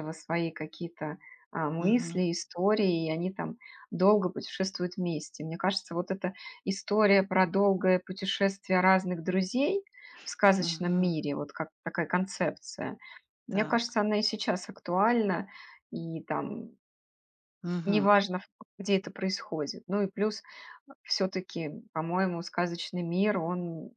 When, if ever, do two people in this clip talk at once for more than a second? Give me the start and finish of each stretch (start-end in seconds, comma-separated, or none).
none